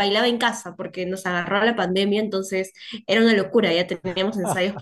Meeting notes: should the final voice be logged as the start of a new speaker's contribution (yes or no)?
no